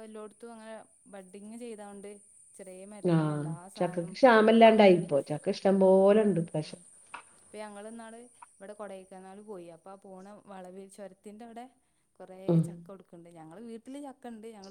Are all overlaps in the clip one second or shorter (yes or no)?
no